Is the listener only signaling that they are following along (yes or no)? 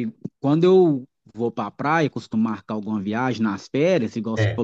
yes